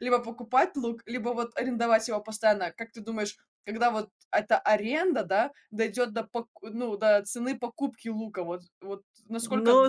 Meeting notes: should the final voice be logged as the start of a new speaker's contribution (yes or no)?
yes